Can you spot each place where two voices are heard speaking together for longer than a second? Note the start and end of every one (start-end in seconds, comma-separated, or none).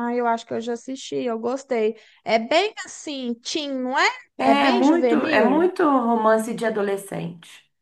4.4-5.7